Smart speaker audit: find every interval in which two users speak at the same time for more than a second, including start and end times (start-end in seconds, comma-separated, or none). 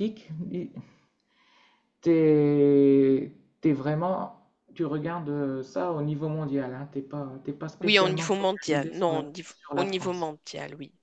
7.8-10.3